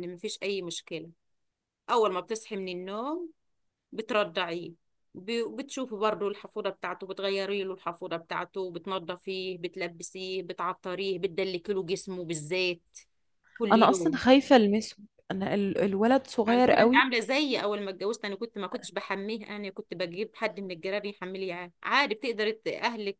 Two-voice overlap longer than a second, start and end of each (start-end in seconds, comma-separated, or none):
none